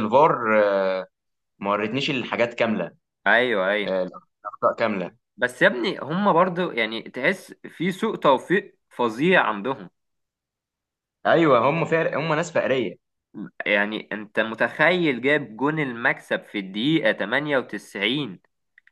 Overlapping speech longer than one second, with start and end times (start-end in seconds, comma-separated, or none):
none